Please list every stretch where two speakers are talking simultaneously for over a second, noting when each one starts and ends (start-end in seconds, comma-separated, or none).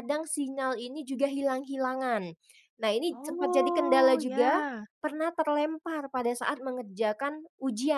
3.1-4.6